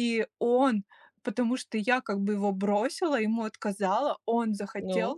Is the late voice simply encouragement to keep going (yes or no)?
yes